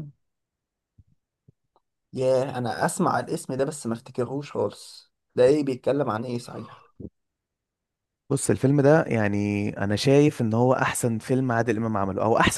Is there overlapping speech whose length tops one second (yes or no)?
no